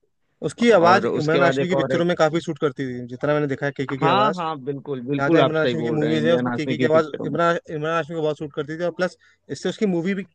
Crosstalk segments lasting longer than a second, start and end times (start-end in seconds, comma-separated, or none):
0.7-2.0, 5.2-7.3